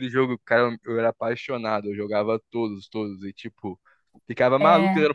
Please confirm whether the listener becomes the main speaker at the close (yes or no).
no